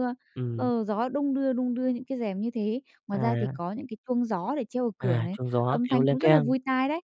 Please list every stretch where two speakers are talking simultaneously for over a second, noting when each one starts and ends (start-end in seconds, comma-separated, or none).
5.0-6.5